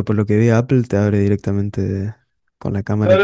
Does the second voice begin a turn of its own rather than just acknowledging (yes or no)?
yes